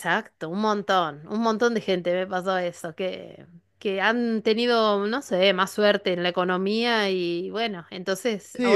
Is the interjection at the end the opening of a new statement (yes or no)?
yes